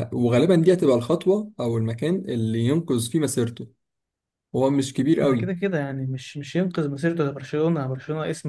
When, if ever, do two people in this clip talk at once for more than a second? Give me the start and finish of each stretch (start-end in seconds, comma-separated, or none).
none